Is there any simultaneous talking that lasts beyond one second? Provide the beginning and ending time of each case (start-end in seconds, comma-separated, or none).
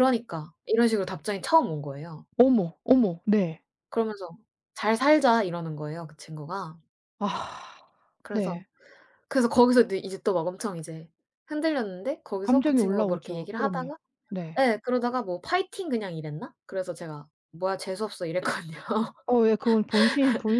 12.4-13.9